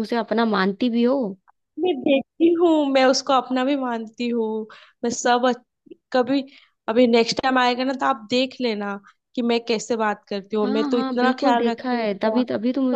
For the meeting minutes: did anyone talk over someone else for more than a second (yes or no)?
yes